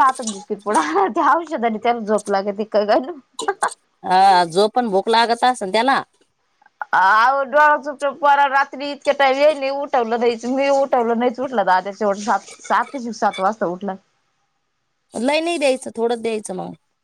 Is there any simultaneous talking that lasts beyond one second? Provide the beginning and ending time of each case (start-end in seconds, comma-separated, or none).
none